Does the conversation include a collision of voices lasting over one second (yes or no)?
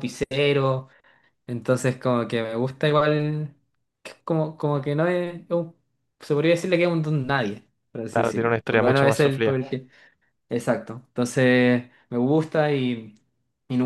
yes